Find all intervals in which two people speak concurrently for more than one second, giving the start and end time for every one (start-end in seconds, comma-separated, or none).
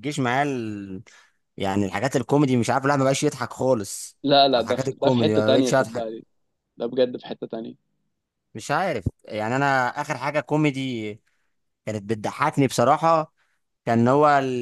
4.5-6.1